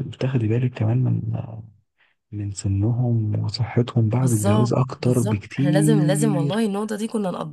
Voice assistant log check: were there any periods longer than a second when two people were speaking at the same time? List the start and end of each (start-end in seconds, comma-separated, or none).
4.2-6.6